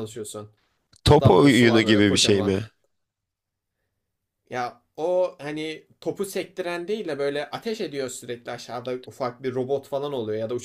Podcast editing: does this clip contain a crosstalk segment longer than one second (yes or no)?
yes